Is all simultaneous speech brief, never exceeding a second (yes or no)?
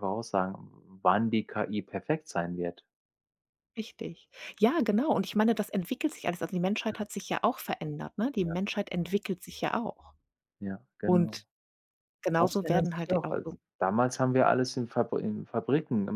no